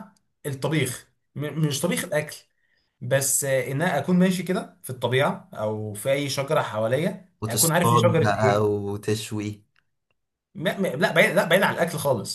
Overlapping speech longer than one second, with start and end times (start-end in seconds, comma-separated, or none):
7.4-8.7